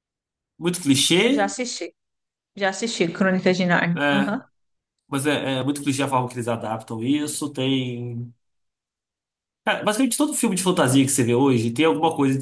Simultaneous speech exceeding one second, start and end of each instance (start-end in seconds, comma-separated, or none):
none